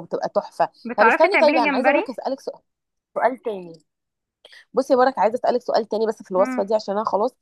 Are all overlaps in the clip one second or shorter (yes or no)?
no